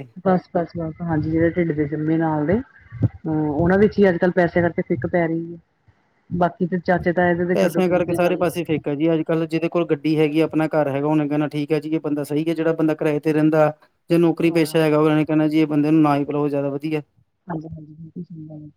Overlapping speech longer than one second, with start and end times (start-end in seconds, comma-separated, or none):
none